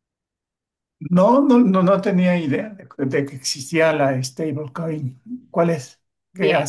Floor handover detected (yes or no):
yes